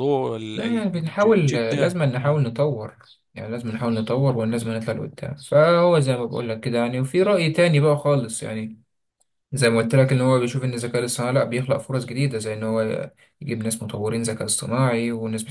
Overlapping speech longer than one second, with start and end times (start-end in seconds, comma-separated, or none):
0.5-2.4